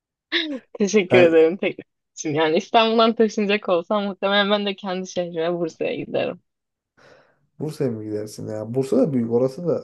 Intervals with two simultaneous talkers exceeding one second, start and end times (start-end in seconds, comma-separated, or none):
none